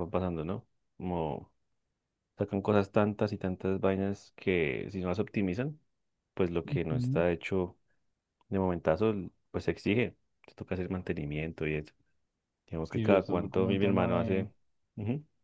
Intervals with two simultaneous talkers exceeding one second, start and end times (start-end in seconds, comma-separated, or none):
12.9-14.5